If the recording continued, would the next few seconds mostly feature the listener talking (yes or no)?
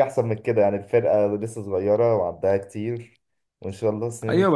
yes